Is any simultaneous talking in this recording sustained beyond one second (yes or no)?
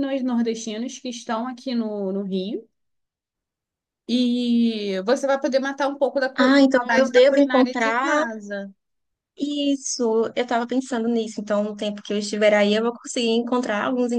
yes